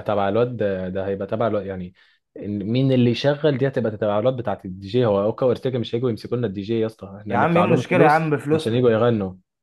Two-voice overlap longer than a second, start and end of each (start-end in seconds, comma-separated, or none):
7.3-8.9